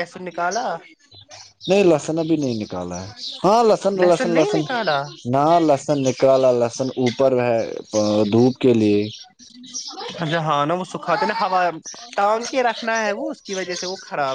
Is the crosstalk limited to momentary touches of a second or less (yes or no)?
yes